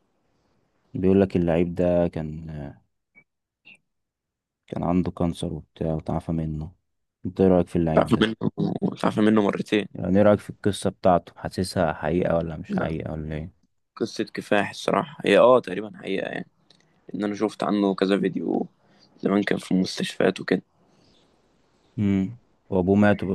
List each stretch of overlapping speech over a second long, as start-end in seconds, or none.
none